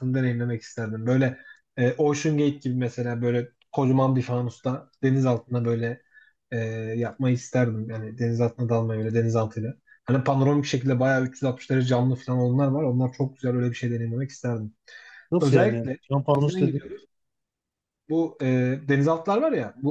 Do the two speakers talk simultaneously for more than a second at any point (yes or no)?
yes